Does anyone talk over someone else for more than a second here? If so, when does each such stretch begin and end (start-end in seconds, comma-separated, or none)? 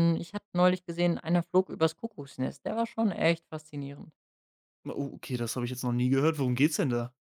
none